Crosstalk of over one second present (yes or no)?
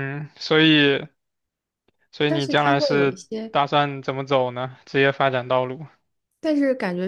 yes